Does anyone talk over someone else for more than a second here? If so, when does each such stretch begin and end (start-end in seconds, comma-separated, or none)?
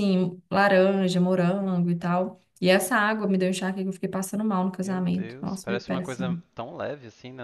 4.8-6.4